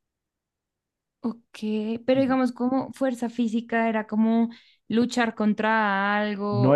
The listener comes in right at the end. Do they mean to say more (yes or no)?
yes